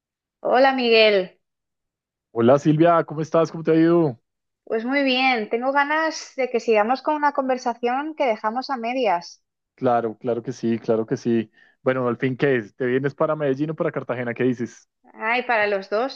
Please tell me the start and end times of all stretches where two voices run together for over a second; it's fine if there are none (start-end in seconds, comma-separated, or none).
none